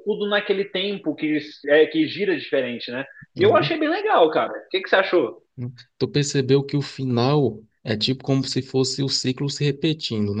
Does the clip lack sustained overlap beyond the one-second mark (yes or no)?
yes